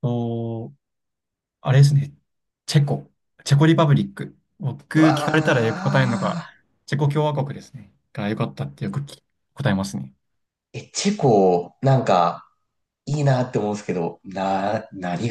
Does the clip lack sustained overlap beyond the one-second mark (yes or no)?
no